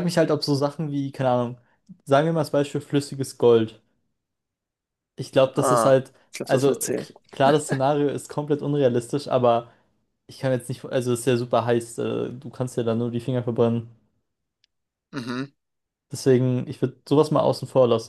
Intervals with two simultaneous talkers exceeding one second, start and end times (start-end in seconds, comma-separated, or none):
5.5-7.1